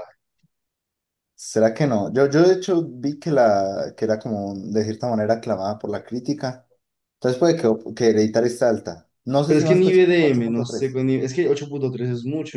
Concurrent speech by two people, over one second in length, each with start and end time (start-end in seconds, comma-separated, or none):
9.4-11.0